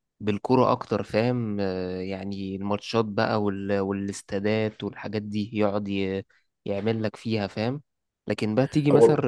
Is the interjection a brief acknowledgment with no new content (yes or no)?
yes